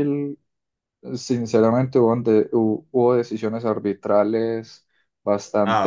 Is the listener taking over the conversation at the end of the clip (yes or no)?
no